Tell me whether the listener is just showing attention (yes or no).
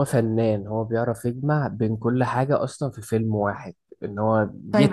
no